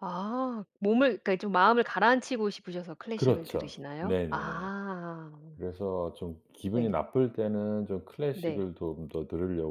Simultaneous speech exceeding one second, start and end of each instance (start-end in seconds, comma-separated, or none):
3.1-4.7